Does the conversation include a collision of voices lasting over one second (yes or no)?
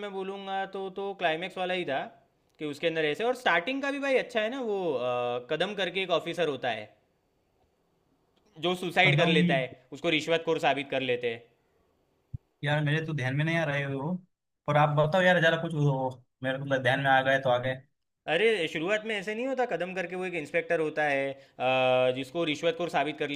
no